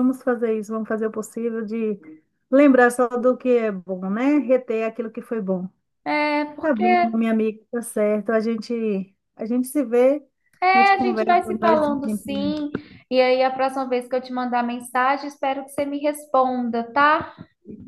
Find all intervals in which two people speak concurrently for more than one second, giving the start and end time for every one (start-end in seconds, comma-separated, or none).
10.7-12.6